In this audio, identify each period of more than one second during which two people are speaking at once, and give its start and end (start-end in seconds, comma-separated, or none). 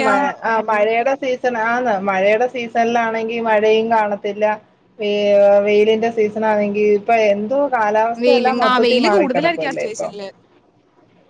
8.2-10.1